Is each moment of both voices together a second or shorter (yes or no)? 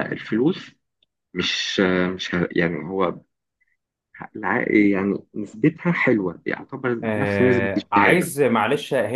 no